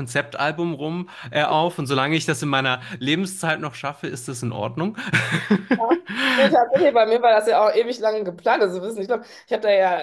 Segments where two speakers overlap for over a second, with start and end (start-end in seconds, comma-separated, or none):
none